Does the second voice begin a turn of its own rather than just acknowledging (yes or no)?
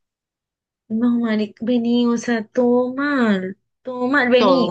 no